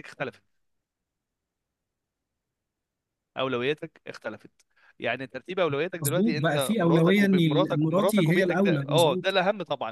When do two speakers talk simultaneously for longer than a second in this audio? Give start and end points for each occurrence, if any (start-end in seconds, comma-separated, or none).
6.0-9.4